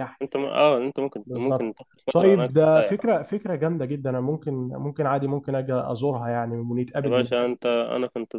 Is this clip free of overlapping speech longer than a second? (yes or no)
no